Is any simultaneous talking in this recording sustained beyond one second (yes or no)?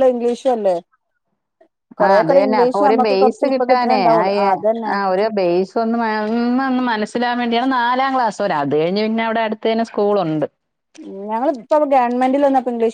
yes